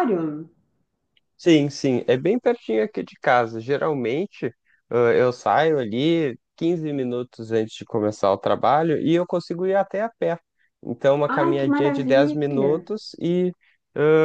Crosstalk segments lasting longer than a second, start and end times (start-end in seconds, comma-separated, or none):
11.3-12.9